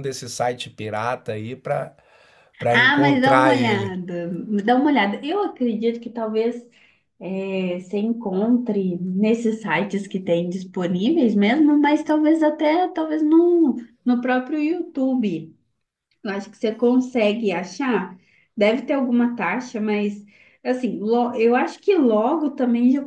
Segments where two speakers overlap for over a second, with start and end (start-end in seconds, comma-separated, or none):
2.7-3.9